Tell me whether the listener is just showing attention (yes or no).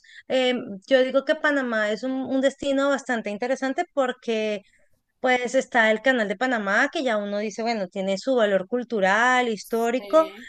yes